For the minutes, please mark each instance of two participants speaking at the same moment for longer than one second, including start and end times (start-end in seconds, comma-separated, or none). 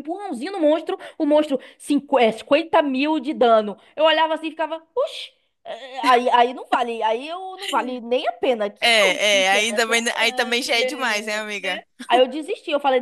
8.8-11.8